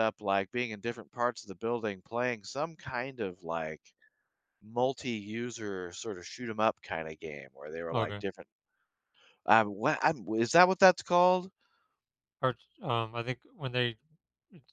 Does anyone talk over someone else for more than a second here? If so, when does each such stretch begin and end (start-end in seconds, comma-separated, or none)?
none